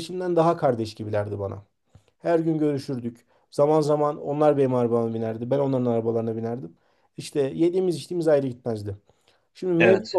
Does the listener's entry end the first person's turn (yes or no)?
no